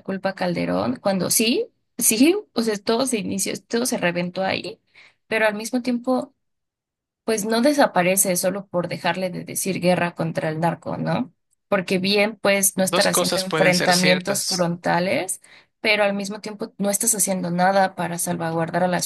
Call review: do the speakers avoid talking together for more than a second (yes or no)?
no